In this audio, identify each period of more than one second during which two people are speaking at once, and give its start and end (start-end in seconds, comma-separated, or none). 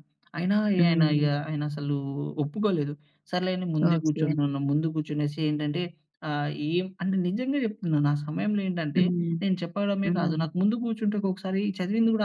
none